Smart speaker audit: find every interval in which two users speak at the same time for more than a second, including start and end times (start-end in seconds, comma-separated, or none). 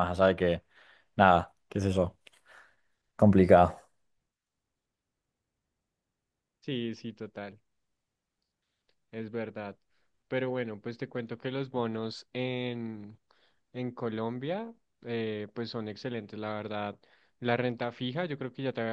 none